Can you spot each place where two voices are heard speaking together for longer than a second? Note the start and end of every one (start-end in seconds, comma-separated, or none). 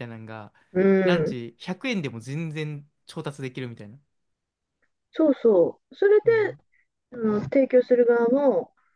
none